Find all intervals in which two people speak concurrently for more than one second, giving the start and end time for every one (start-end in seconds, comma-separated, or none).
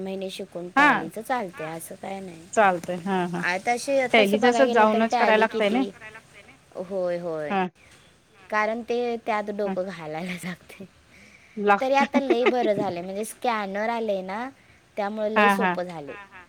4.1-5.8